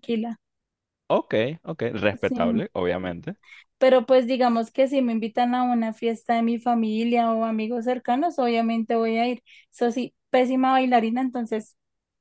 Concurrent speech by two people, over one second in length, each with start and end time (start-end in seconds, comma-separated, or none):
none